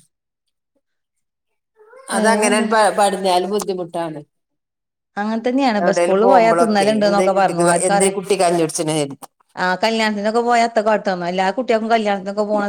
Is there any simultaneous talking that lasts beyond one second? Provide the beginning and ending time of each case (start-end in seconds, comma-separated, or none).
5.8-8.2